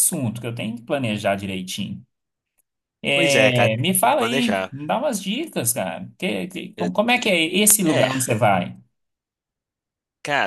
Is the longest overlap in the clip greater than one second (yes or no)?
yes